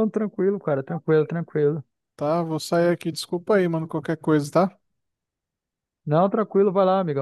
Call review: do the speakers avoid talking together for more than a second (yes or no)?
yes